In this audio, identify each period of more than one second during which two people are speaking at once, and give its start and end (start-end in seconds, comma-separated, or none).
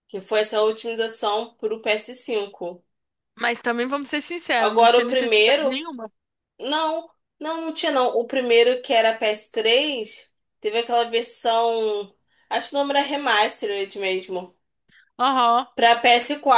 4.5-5.8